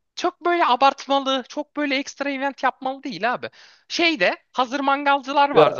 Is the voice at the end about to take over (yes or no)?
yes